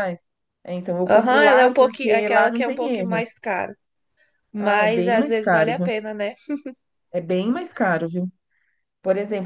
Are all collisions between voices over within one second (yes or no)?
no